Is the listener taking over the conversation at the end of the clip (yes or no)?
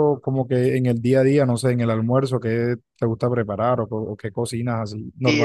yes